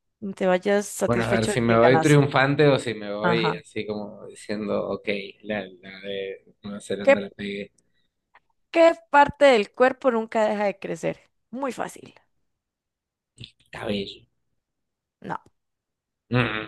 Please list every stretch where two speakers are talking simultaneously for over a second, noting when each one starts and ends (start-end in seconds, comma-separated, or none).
1.0-2.3